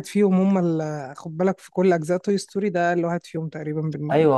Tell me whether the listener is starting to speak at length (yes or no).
yes